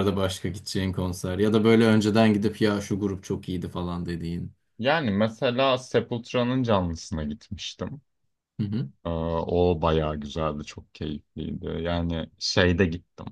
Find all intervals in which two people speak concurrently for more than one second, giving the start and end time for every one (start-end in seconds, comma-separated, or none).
none